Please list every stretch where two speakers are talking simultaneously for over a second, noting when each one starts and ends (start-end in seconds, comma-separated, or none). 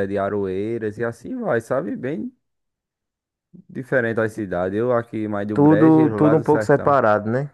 5.5-7.0